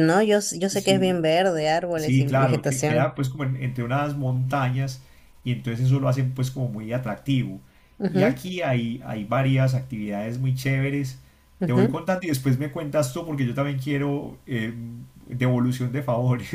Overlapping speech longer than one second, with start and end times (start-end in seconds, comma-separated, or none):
1.9-3.1